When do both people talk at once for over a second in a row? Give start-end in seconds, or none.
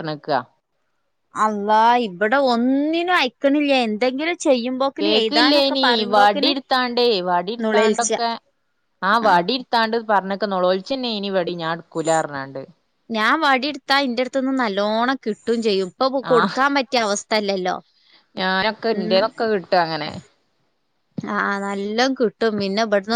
none